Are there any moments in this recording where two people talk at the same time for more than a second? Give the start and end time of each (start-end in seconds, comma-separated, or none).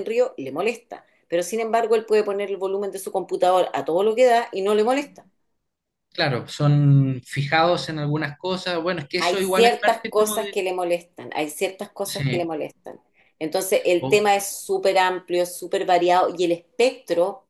9.2-10.6